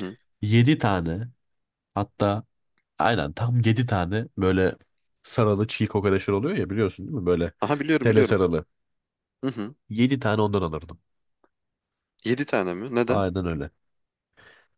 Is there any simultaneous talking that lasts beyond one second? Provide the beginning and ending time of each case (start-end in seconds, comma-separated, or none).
none